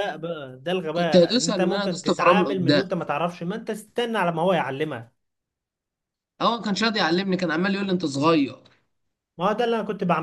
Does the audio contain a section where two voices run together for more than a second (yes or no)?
yes